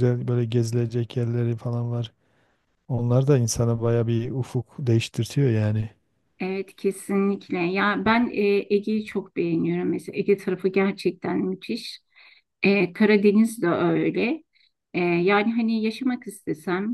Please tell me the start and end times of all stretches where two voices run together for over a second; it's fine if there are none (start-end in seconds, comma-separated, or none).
none